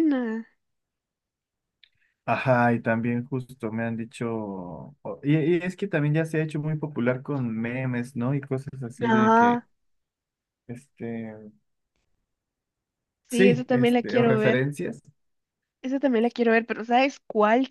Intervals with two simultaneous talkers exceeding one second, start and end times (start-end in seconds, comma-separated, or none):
13.3-14.7